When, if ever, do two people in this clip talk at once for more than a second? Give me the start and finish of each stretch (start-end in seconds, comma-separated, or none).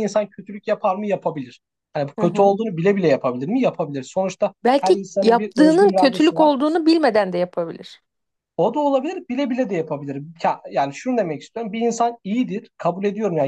4.6-6.5